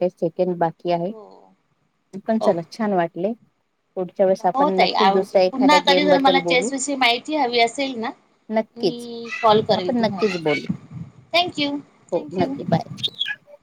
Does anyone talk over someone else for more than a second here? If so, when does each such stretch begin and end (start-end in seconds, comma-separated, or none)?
4.6-6.7